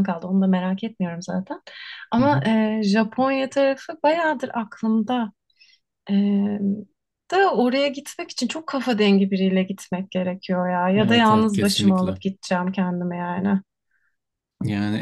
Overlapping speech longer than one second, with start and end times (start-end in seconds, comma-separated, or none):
11.0-12.2